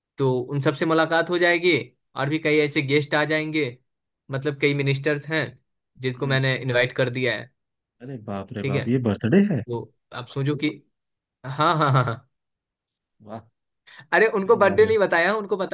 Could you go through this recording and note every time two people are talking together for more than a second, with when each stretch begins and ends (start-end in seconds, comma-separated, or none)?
none